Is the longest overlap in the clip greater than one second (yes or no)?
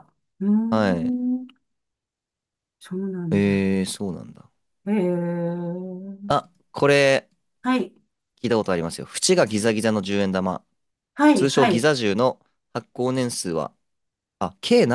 no